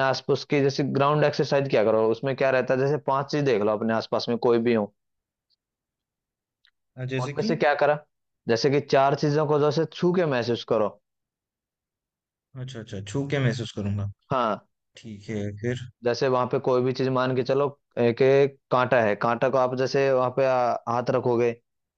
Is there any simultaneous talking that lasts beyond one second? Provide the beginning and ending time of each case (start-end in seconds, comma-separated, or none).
none